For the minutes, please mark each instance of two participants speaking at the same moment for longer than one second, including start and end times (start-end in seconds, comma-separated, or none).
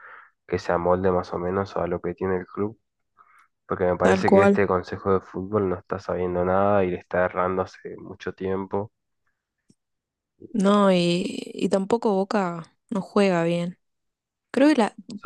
none